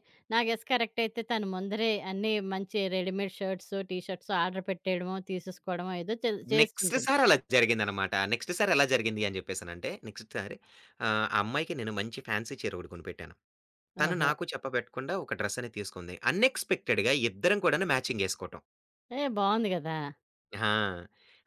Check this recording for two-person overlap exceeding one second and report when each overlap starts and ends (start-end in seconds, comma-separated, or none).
none